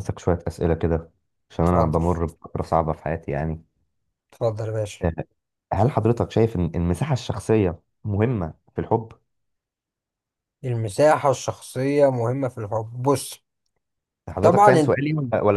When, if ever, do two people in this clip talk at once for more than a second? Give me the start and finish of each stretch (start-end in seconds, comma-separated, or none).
none